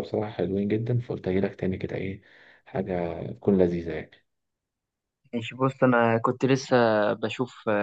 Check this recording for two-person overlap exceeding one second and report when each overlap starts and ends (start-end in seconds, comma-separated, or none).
none